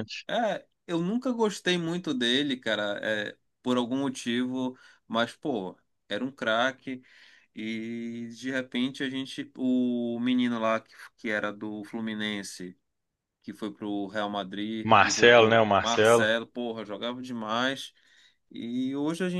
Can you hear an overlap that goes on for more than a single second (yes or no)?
yes